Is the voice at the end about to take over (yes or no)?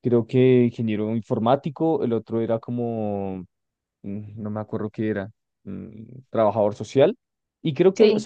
no